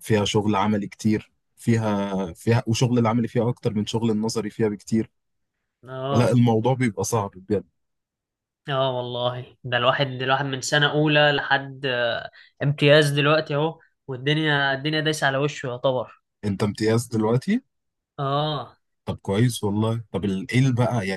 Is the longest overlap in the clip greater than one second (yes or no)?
no